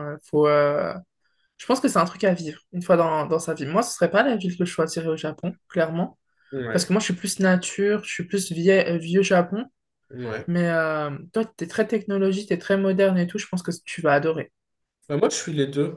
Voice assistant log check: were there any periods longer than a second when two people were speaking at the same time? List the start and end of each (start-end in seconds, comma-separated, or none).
none